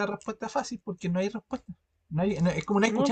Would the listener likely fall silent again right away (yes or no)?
yes